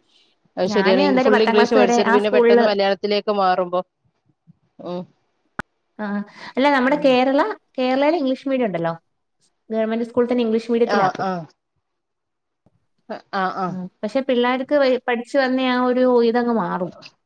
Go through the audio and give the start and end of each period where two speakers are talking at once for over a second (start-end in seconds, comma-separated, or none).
0.7-2.7